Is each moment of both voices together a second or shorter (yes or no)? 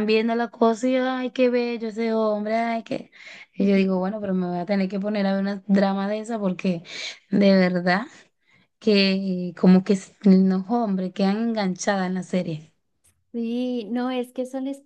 yes